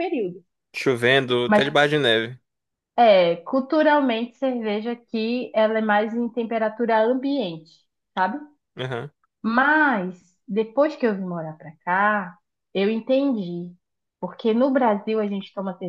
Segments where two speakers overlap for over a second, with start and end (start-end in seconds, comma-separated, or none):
none